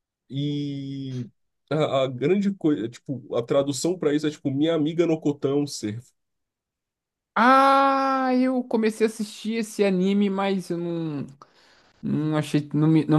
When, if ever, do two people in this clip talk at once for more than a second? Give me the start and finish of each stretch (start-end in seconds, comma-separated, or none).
none